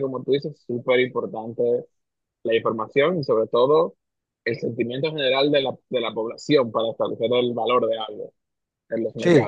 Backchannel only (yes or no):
no